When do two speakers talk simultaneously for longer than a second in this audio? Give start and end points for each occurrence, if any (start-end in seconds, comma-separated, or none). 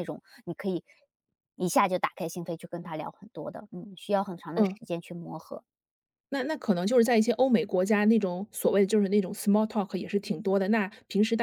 none